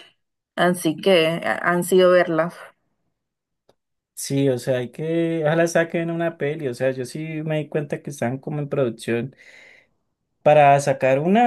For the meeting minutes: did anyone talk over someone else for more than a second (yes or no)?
no